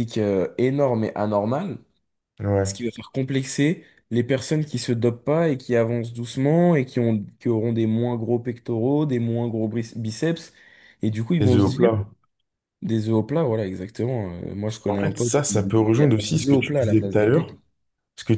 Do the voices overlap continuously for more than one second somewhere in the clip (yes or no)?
yes